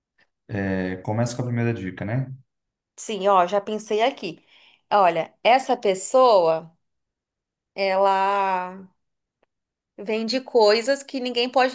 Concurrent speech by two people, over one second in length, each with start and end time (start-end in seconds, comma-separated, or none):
none